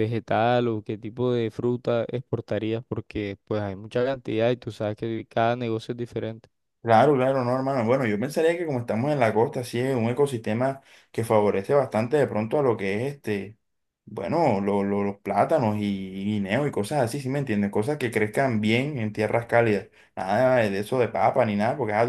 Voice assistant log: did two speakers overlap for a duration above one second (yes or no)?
no